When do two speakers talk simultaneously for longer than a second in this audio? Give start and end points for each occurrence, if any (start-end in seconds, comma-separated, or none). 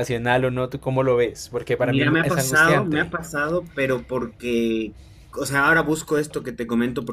1.8-3.1